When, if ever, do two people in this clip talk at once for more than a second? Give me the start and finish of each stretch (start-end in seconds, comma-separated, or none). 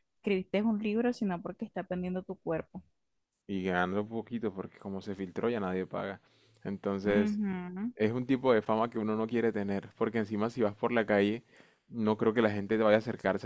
none